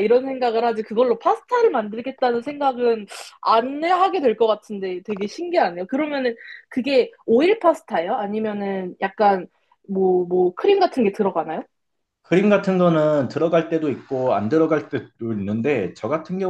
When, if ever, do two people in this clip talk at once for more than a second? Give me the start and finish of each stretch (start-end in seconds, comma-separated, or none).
none